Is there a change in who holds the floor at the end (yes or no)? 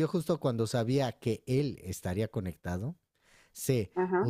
no